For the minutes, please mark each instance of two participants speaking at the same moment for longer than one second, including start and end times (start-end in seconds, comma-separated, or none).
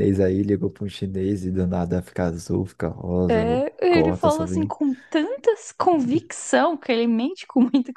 3.3-4.7